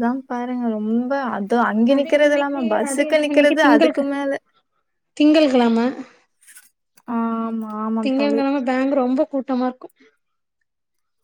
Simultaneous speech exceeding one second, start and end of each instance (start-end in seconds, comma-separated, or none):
1.9-4.0